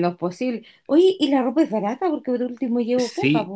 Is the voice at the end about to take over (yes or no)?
yes